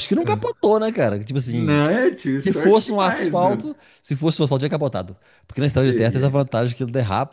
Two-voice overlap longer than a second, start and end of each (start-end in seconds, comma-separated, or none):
2.5-3.7